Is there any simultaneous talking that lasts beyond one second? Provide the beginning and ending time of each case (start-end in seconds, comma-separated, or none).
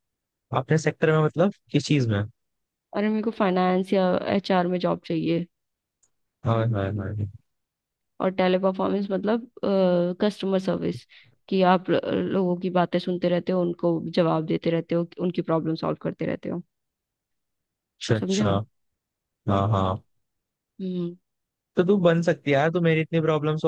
none